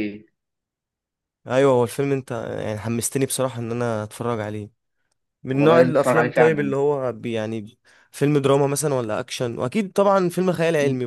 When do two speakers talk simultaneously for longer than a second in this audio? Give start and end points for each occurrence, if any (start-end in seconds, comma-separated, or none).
5.5-6.8